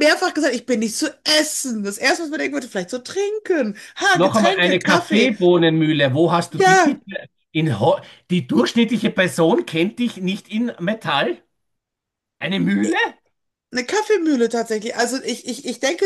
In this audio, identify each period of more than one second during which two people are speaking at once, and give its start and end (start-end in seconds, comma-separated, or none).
4.1-5.3